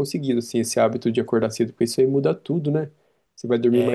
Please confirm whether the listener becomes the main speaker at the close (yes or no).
no